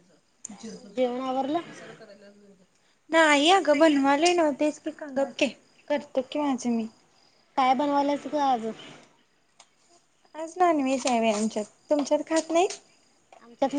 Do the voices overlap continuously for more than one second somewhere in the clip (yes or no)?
no